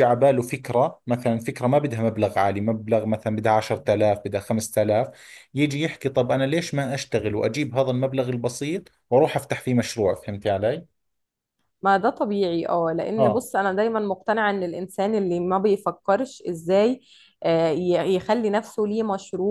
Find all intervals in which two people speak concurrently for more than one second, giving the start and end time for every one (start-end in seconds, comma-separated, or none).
none